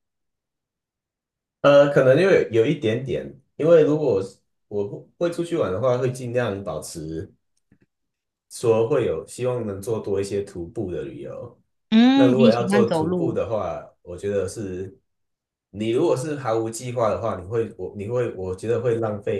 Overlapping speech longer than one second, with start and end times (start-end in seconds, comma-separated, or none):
12.1-13.4